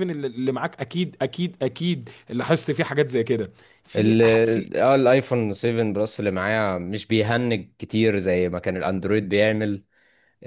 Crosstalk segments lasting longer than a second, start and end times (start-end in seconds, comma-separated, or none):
none